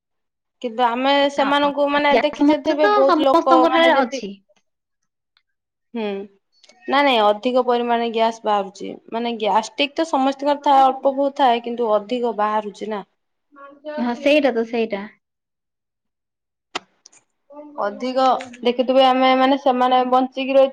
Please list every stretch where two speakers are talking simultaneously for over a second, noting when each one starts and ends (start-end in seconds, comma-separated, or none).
2.1-4.2